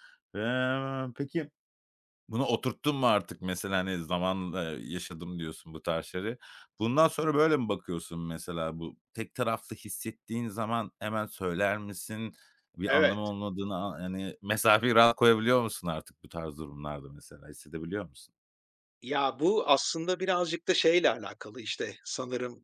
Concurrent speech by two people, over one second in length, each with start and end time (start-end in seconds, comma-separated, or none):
none